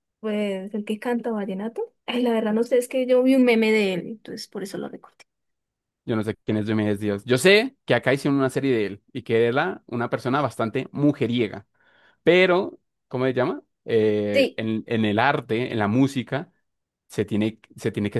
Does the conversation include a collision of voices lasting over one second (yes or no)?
no